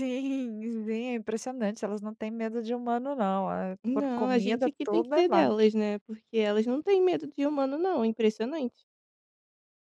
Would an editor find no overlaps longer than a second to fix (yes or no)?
no